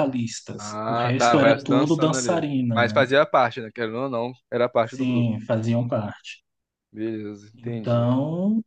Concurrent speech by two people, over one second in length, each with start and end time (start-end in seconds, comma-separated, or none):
0.6-3.0